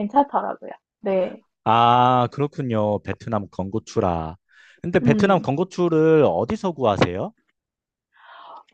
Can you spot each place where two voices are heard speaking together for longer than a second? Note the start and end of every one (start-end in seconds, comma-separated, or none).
none